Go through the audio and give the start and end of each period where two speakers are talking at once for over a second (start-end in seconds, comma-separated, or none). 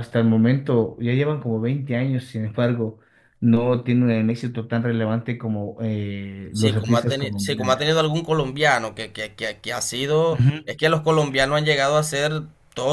6.5-7.9